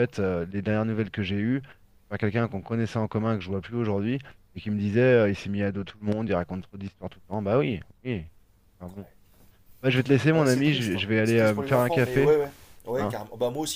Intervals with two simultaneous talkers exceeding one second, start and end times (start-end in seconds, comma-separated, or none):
10.3-12.3